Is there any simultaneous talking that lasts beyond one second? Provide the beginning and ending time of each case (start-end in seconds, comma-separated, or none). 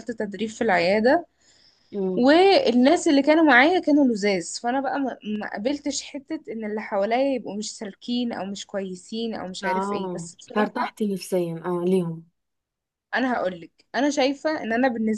9.6-10.9